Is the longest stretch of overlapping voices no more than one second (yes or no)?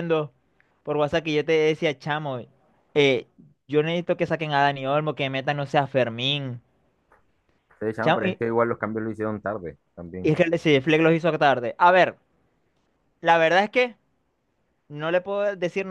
yes